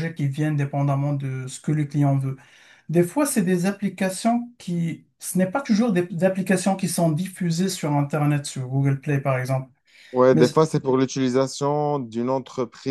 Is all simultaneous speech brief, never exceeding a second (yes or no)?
yes